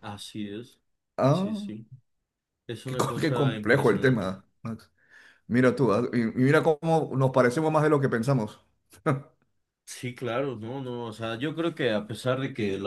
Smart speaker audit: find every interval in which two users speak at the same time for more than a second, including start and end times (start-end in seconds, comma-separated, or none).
2.9-4.3